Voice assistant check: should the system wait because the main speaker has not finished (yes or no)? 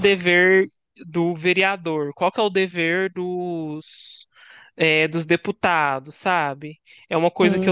yes